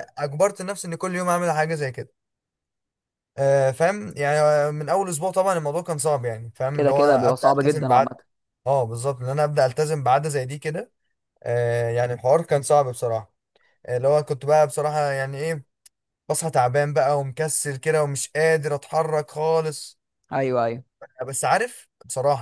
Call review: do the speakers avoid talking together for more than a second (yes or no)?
no